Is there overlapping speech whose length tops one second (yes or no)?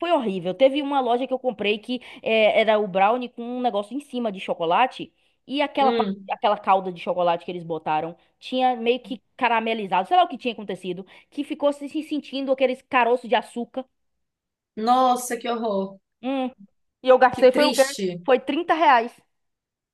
no